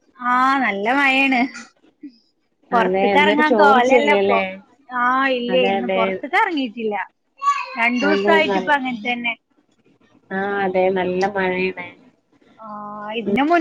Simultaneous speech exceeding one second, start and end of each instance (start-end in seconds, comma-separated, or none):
2.8-4.4